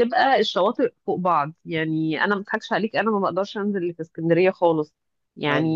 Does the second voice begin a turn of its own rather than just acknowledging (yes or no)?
no